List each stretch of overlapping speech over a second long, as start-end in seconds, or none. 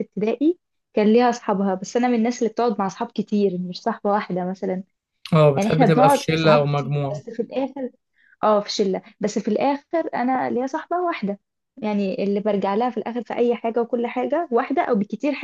5.5-7.2